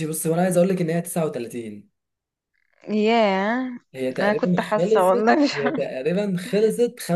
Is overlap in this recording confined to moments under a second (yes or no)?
no